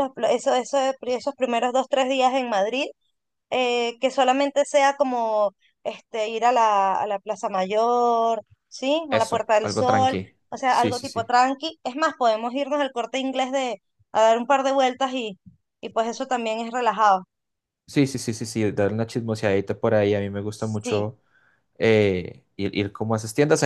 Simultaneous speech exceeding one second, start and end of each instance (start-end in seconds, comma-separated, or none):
9.1-11.3